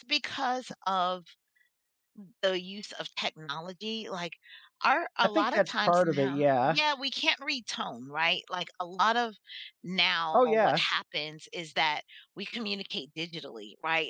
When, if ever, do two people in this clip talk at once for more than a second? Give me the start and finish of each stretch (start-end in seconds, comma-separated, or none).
5.2-6.8